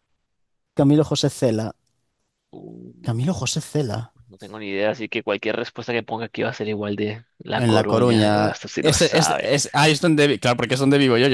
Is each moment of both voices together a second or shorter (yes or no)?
no